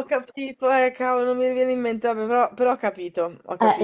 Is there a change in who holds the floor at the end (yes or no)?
yes